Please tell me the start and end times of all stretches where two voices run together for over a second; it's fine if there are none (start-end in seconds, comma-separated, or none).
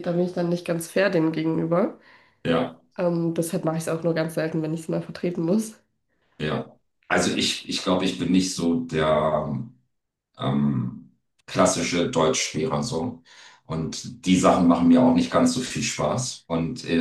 none